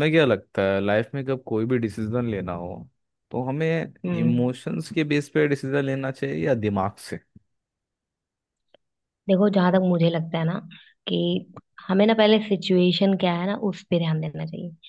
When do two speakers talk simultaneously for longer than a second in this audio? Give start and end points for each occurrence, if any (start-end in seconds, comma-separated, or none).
none